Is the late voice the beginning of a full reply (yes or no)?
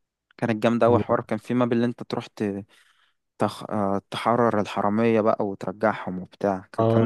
yes